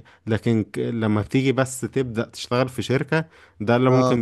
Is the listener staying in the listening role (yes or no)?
yes